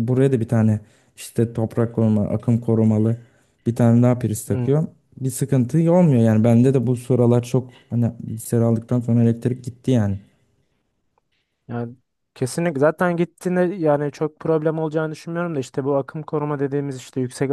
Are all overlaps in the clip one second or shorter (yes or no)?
yes